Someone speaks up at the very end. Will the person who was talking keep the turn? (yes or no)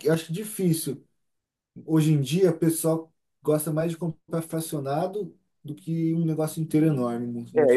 no